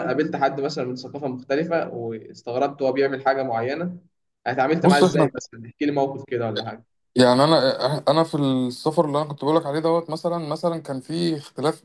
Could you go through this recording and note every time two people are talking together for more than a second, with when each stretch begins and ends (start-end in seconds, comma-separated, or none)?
none